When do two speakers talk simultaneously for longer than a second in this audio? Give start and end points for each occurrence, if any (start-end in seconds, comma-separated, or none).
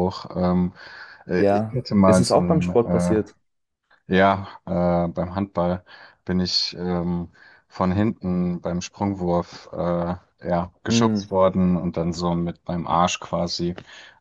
1.4-3.2